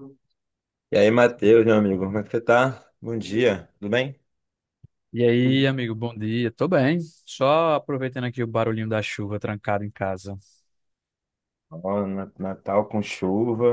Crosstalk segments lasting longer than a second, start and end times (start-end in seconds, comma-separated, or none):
none